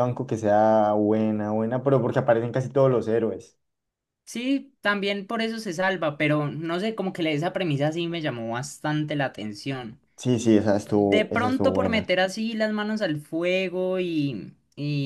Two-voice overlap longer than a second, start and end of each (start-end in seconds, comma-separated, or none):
10.7-12.1